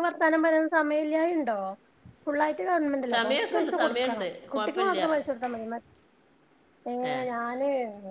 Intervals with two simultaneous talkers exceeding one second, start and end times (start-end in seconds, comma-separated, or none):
3.1-5.1